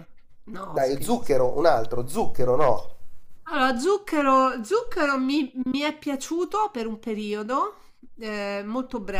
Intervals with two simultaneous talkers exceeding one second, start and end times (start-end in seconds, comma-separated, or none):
none